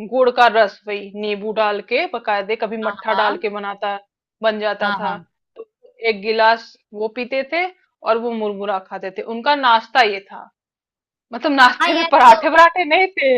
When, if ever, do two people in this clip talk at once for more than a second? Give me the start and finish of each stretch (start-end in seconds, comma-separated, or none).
none